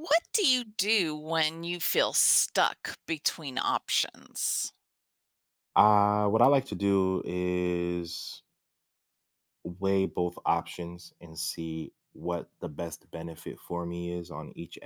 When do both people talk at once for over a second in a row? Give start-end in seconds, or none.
none